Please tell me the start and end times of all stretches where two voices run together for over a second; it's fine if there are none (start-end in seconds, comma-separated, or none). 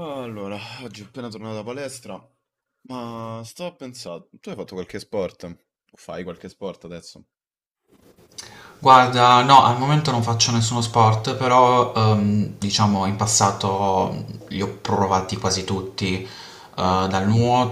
none